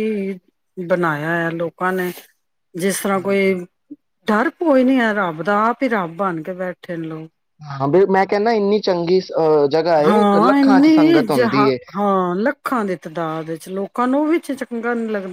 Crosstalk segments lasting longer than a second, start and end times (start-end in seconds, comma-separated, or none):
none